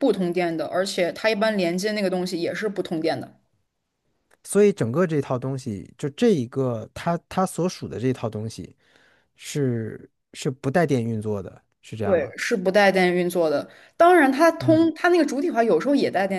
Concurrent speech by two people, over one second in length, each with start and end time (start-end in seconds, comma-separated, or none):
none